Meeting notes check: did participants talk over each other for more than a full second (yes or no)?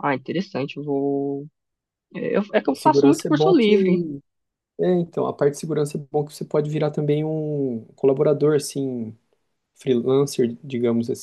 yes